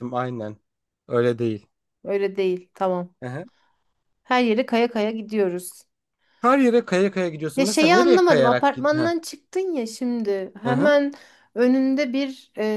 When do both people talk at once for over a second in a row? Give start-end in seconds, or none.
7.5-9.1